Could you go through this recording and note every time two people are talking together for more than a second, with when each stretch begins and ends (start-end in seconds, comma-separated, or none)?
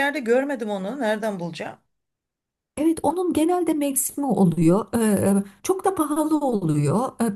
none